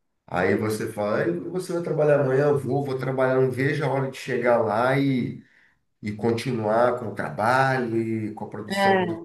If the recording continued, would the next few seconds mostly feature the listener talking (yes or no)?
no